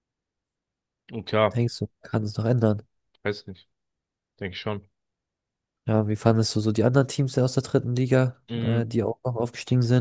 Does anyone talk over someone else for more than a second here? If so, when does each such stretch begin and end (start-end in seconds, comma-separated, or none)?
none